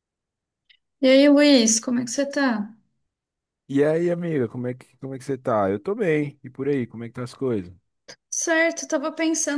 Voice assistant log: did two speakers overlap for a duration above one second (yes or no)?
no